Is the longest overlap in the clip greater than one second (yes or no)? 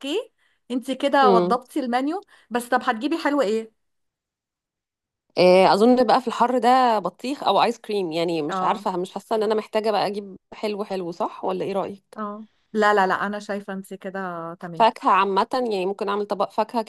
no